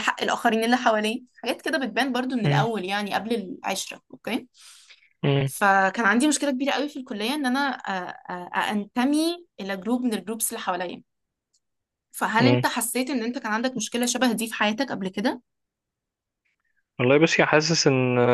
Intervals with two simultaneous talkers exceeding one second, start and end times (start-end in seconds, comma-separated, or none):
none